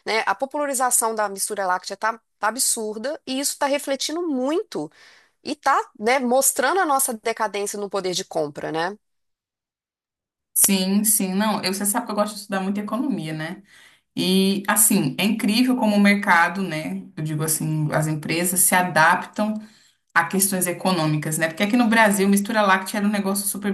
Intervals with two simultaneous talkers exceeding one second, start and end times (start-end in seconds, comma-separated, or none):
none